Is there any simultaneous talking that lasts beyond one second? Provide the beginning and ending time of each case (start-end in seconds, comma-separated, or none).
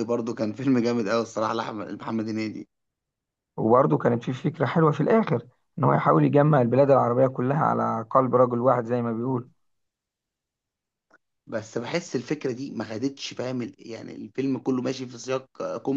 none